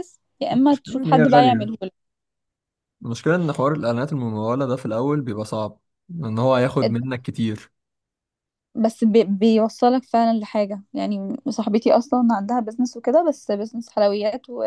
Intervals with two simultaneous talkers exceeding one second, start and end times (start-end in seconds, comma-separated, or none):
0.5-1.7